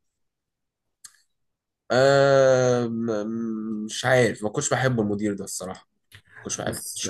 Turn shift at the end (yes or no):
yes